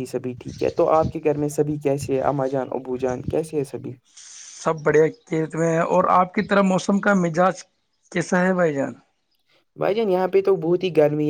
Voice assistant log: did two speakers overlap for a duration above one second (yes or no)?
no